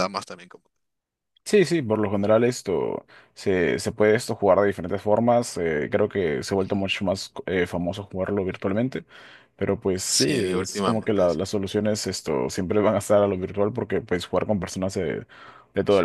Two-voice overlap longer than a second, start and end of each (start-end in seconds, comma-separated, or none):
10.1-11.4